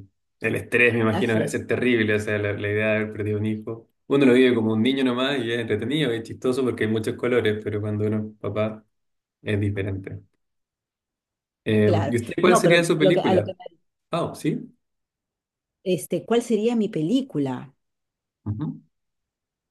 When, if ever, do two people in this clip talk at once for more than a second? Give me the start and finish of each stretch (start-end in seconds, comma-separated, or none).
11.8-13.5